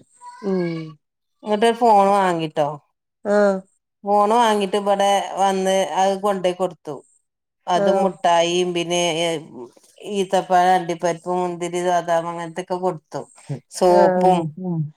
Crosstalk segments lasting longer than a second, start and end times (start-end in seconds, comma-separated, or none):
none